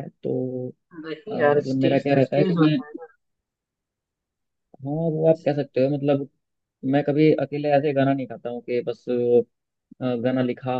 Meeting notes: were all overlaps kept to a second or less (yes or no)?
no